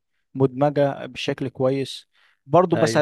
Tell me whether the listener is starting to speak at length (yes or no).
no